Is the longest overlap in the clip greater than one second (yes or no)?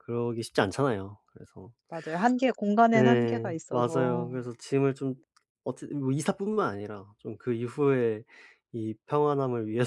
yes